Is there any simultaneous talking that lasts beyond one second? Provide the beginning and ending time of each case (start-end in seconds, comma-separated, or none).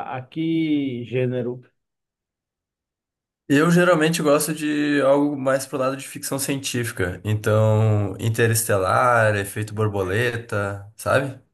none